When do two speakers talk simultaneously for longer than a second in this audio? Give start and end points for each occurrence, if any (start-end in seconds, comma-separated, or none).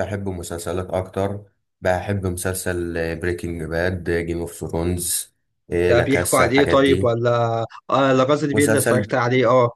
5.8-7.1